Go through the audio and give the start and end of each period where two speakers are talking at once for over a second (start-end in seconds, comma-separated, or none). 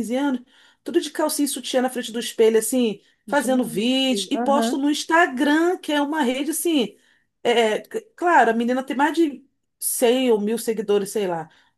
3.3-4.8